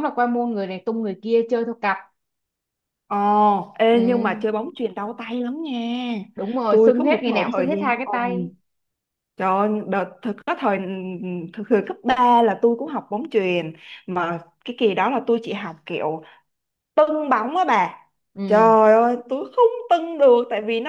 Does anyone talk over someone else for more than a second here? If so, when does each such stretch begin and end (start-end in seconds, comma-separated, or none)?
6.7-8.3